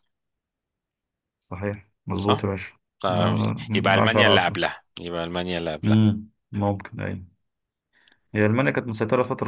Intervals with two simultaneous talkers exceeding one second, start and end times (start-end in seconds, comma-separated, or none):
3.1-4.6